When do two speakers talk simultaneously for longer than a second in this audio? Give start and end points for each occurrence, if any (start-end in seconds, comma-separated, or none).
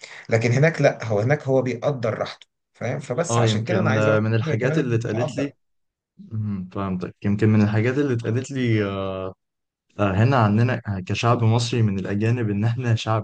3.3-5.5